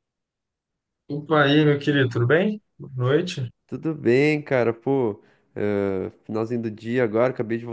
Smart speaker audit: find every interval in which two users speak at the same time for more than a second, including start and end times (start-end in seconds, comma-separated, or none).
none